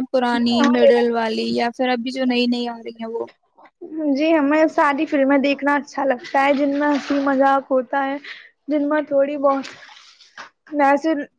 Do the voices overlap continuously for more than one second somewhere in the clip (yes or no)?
no